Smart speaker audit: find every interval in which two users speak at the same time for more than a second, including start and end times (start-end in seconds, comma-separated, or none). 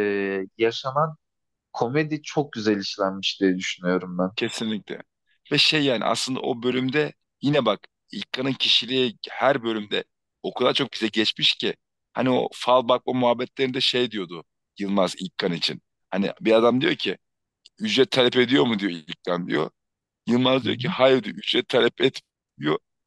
none